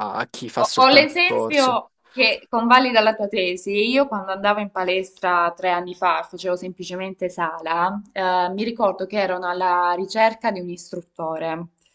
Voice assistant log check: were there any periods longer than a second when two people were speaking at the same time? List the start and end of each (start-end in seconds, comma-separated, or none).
0.6-1.8